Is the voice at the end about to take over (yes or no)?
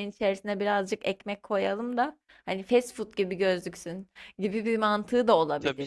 yes